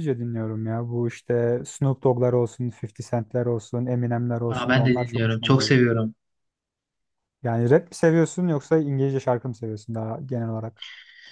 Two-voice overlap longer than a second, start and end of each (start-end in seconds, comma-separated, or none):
4.5-5.8